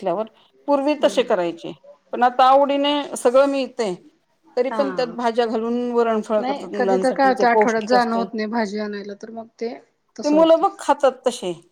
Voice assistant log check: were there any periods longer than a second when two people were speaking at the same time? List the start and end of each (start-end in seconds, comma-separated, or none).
6.4-8.2